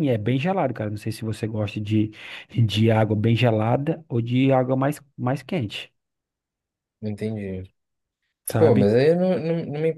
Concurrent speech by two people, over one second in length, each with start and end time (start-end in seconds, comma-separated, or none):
none